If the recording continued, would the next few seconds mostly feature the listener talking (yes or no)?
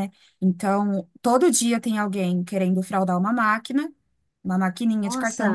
no